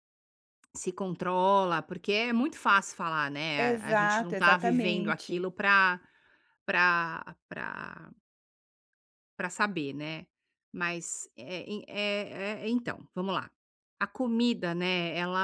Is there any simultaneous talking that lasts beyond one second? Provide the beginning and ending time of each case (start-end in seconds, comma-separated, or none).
3.5-5.5